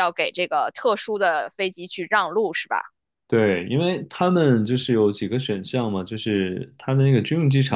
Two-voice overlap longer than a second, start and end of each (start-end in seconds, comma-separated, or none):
none